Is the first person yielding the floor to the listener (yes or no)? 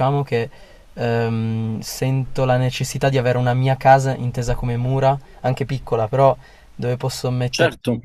yes